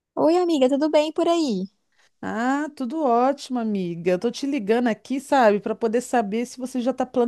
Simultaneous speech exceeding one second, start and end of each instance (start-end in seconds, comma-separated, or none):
none